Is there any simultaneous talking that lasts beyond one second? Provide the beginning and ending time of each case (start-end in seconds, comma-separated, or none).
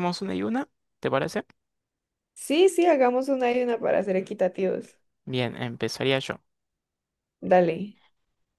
none